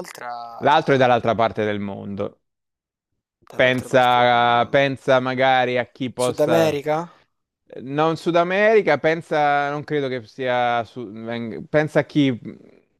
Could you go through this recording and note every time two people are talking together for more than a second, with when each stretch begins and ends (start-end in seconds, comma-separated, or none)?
3.6-4.9